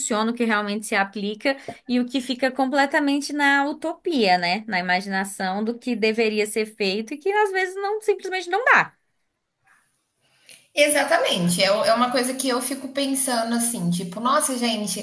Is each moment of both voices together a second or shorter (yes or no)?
yes